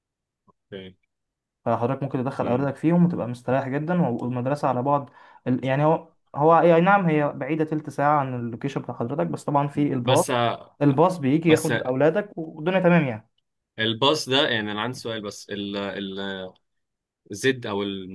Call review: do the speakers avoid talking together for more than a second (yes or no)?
yes